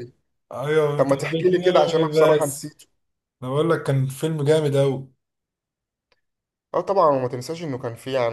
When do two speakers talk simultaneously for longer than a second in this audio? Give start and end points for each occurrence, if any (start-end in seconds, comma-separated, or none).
0.9-2.7